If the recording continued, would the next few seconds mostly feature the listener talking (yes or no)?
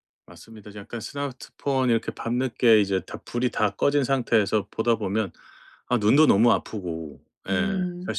no